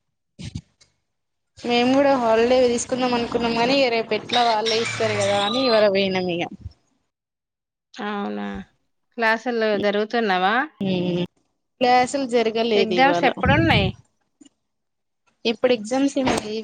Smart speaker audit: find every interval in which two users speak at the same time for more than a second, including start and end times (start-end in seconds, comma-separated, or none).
none